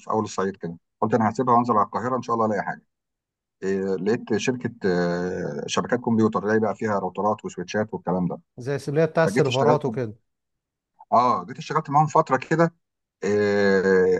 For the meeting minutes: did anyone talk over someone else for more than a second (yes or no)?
no